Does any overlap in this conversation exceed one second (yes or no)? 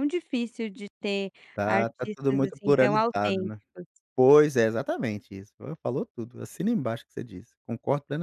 yes